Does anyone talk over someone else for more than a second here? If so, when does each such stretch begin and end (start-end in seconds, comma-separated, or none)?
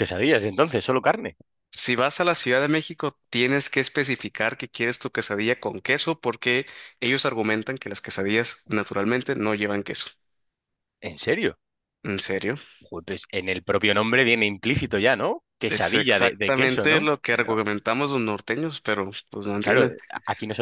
15.7-17.1